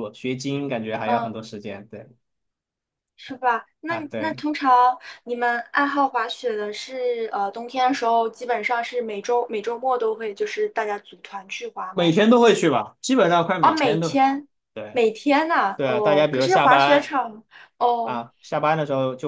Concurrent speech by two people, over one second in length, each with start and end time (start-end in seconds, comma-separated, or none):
15.8-17.1